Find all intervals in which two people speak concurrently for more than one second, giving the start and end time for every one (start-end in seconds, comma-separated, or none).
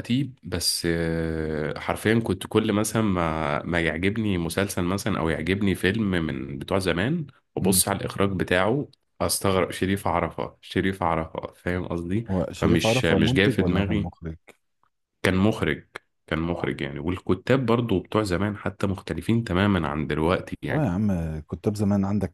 12.3-14.1